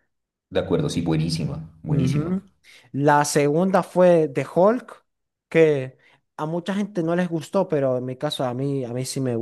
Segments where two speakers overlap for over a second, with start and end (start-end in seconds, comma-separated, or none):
none